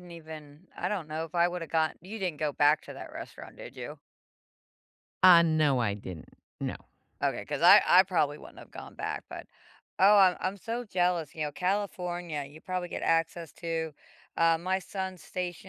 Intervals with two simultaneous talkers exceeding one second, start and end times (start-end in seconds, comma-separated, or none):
none